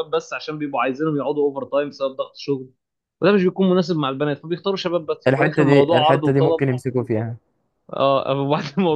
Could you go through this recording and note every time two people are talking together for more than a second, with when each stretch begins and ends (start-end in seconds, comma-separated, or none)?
5.3-6.7